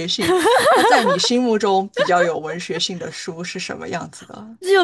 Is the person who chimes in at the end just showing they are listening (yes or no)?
no